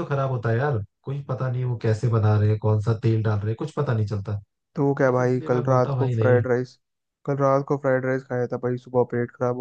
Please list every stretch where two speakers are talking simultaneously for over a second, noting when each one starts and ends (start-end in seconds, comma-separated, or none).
5.0-6.4